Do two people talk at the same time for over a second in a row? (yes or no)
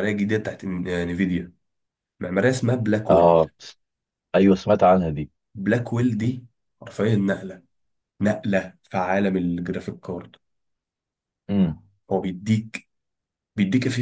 no